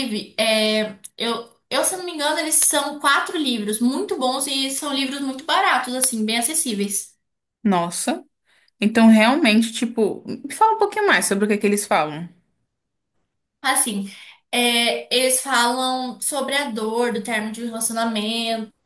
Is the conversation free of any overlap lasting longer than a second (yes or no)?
yes